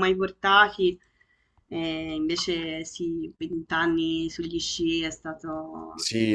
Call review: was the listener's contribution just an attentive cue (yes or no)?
no